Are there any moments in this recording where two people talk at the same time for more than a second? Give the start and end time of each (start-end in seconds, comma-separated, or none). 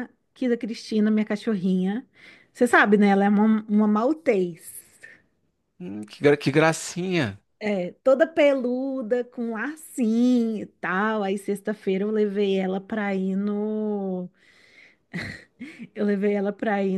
none